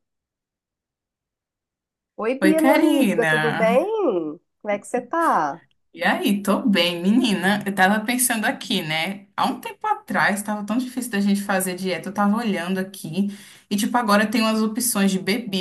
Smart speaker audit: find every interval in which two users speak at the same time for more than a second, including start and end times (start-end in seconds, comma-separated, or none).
2.4-3.8